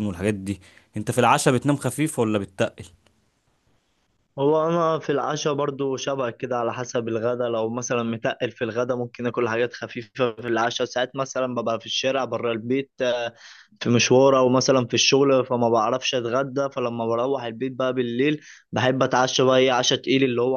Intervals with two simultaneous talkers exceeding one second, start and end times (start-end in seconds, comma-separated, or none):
none